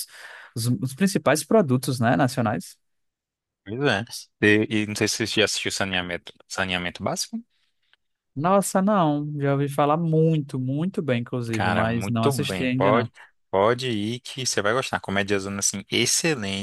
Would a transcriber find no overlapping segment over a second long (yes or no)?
no